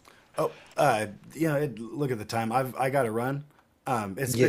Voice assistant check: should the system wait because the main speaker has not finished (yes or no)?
no